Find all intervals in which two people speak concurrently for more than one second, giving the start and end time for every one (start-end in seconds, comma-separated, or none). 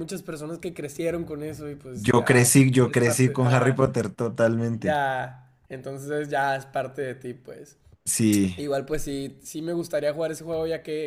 1.9-3.8